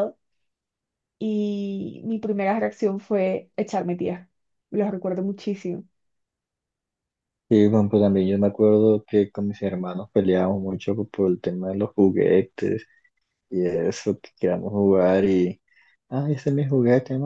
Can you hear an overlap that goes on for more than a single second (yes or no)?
no